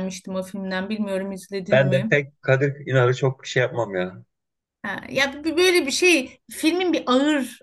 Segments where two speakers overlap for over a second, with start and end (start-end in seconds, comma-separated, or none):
none